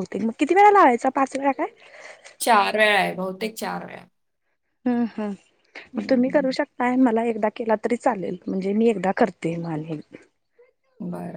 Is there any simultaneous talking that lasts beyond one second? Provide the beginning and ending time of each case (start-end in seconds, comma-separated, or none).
none